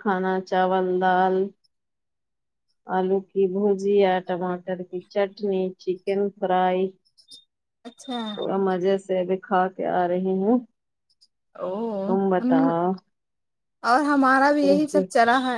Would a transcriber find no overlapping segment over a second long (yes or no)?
yes